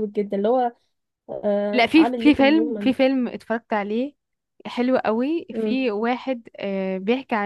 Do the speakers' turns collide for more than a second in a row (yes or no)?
yes